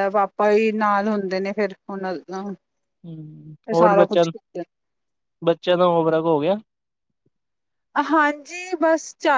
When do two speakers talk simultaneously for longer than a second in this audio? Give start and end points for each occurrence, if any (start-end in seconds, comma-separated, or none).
none